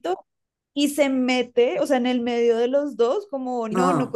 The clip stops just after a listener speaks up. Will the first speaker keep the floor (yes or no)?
yes